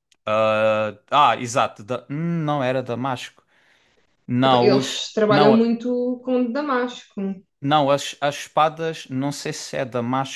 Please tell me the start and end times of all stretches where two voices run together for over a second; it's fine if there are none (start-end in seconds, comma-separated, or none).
4.4-5.7